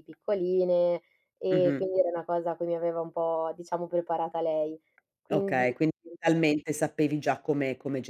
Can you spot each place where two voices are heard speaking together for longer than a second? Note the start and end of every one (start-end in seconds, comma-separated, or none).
none